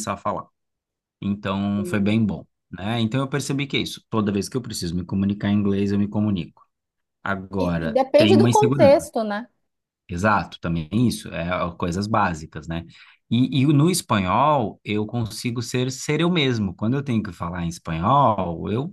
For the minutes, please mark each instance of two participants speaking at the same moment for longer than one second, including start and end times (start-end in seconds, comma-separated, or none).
7.6-9.0